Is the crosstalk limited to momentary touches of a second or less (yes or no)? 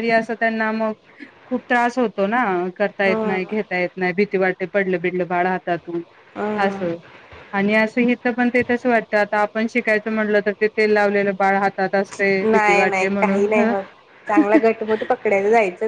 yes